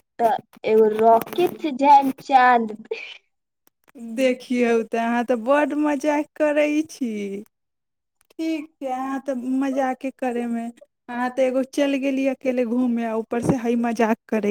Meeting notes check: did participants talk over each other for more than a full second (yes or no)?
no